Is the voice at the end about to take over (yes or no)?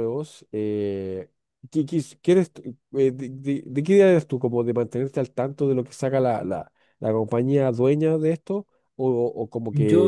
yes